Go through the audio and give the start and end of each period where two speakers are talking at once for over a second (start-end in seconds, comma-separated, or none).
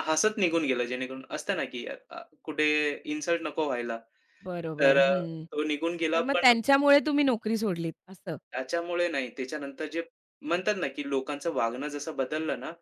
none